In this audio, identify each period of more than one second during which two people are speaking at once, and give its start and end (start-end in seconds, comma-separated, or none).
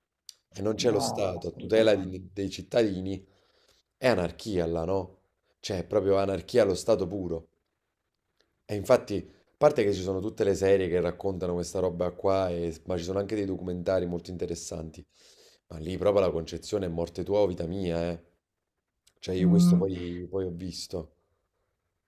0.8-2.2